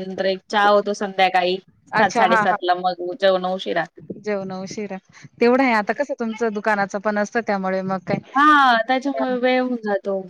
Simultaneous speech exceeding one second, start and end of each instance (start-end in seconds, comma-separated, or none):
none